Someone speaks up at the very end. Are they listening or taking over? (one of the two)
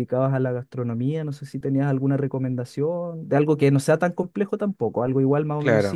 listening